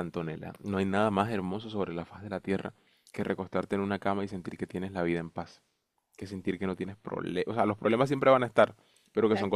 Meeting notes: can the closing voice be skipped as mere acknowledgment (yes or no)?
yes